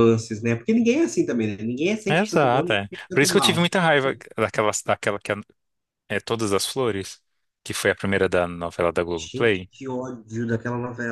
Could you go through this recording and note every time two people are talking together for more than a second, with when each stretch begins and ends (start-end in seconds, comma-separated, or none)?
2.1-3.6